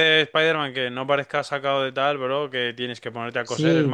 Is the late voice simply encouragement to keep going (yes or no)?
no